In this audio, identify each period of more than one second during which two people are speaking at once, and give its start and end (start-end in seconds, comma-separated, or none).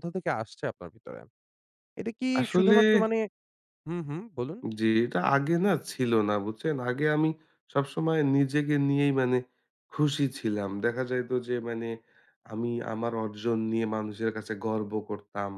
none